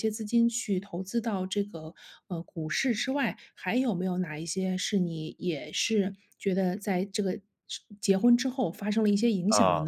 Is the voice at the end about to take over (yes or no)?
yes